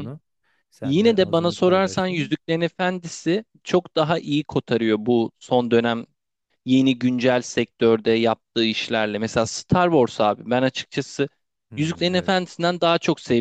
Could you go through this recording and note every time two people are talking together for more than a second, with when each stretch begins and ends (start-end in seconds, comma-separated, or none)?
0.8-2.4